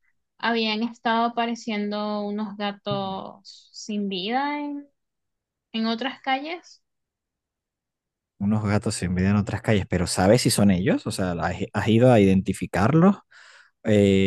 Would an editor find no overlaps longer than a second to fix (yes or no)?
yes